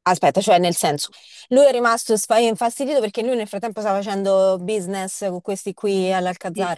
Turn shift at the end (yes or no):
yes